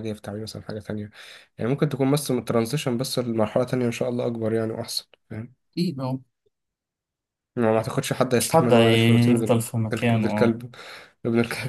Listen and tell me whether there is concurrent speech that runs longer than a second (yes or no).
yes